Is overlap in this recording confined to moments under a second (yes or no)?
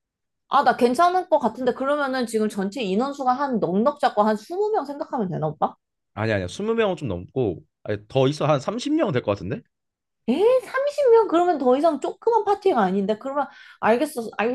yes